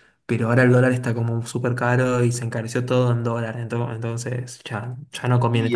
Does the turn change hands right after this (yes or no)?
yes